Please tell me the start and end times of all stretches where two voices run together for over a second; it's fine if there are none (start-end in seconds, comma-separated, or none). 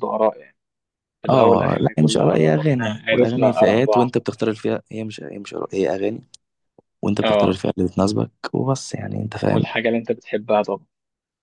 1.3-4.1